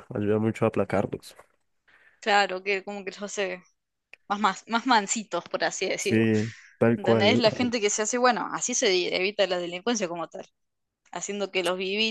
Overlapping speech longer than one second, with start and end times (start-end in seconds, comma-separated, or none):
none